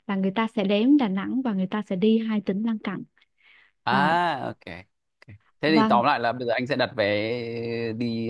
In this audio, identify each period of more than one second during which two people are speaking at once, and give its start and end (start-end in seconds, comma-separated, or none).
none